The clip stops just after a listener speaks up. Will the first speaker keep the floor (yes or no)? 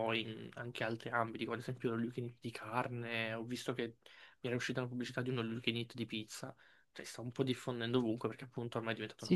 no